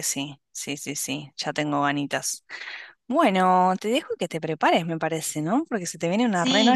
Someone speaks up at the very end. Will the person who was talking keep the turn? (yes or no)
no